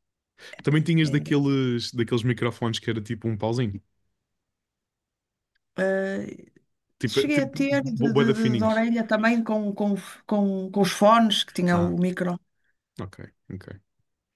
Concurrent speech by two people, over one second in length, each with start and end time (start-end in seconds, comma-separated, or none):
7.1-8.8